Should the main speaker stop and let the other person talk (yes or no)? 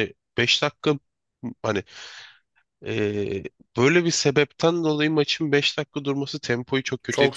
yes